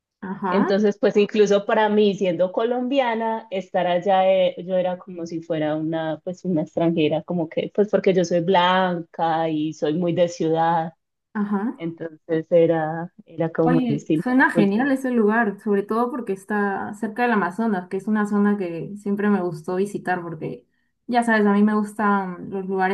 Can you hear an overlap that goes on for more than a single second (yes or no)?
yes